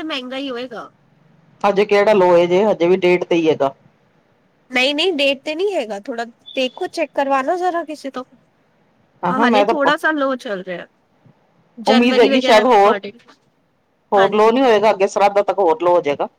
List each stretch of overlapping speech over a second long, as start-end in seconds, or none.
none